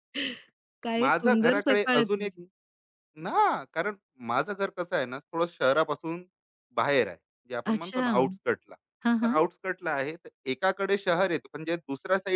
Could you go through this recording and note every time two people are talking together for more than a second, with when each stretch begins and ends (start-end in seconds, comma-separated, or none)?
1.0-2.3